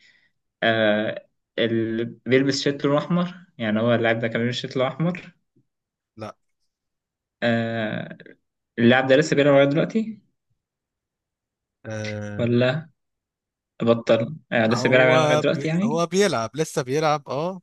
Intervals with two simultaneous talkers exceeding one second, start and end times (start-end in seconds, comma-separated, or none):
14.7-16.0